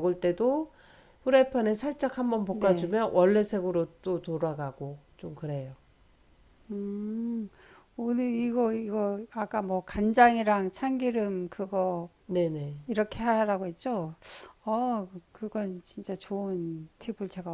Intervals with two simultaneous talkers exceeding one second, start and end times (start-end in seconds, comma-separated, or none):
none